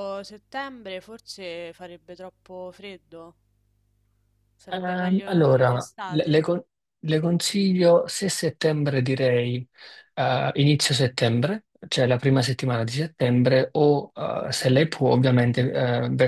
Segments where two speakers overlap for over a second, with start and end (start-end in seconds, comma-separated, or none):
4.7-6.4